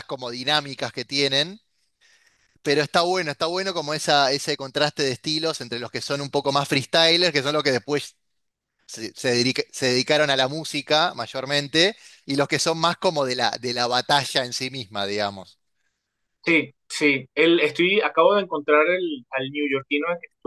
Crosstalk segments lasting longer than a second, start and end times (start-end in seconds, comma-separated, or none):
none